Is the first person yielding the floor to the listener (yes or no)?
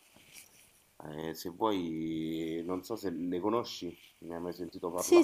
yes